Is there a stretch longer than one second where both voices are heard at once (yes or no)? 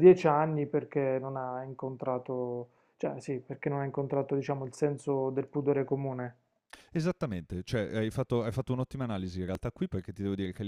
no